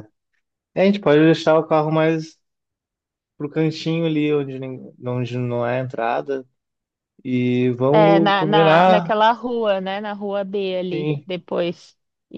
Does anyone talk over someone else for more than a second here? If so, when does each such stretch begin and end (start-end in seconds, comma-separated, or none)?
7.9-9.1